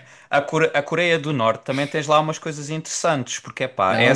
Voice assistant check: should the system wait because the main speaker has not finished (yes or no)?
no